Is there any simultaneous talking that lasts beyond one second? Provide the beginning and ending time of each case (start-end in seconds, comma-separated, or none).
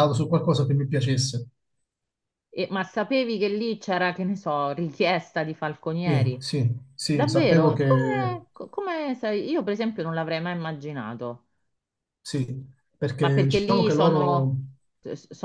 7.1-8.4, 13.2-14.6